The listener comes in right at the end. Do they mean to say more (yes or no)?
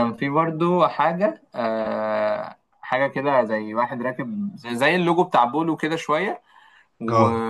no